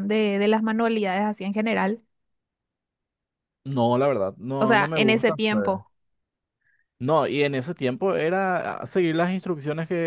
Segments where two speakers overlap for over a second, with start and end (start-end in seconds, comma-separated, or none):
4.6-5.8